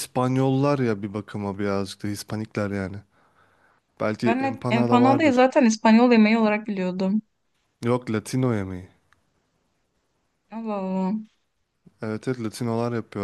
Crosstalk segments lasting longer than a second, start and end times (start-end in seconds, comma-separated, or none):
4.2-5.5